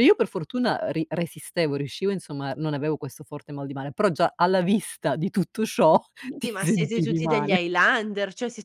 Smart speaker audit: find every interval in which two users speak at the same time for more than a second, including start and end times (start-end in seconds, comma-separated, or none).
6.4-7.6